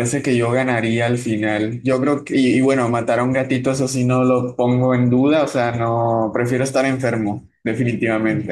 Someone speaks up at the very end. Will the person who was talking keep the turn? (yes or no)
no